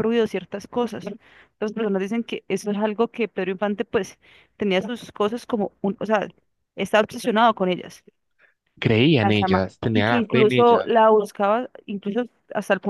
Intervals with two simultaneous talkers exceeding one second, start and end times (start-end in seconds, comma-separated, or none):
9.2-10.9